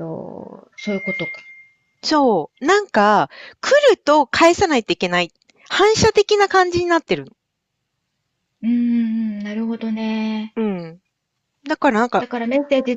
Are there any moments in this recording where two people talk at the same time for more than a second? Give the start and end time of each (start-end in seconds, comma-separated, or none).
none